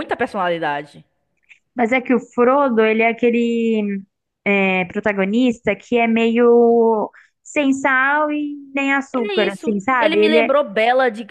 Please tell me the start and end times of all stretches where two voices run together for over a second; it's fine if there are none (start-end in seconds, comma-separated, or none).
9.2-10.6